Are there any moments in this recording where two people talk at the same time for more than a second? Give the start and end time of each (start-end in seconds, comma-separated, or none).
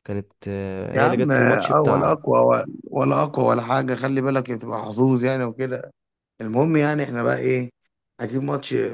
0.9-2.2